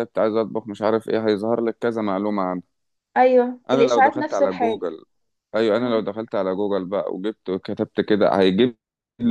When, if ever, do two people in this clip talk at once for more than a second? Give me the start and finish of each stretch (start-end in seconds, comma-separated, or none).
3.7-4.9